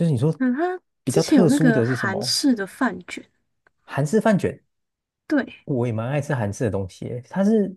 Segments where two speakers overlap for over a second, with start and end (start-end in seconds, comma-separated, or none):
1.0-2.4